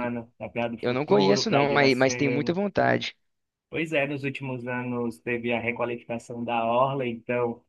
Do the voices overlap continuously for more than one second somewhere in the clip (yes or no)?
yes